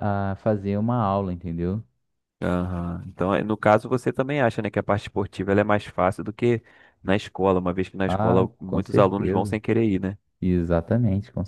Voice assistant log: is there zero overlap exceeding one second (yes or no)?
no